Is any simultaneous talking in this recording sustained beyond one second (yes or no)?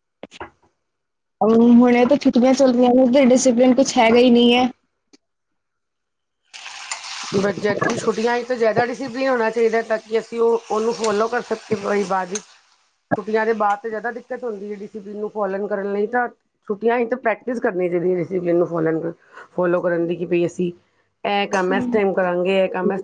no